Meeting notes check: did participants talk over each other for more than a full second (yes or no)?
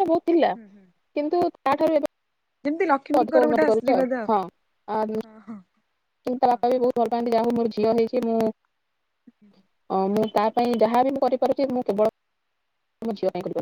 yes